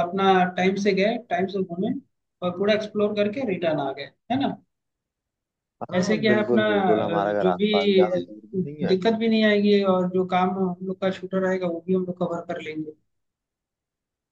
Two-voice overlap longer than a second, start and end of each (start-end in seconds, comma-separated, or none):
5.9-7.7